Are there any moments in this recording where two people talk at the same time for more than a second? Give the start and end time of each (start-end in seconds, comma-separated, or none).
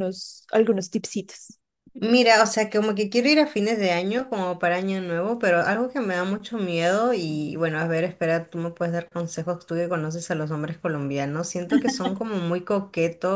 none